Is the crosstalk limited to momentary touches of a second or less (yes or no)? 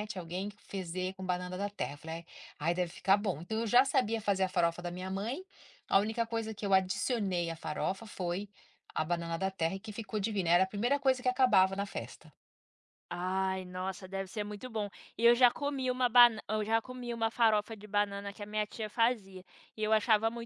yes